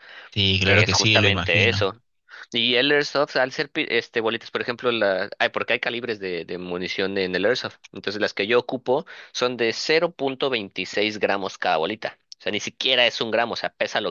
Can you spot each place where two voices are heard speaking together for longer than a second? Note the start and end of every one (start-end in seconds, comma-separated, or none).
0.6-1.9